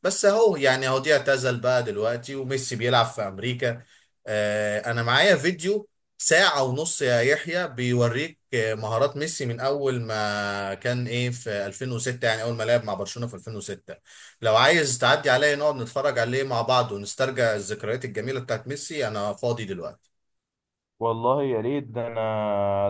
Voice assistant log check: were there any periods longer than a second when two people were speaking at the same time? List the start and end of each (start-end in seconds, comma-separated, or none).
none